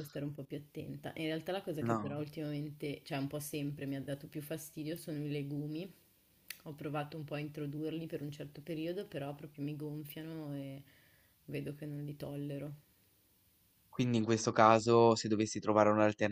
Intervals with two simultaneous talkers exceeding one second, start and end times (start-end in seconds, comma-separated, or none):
none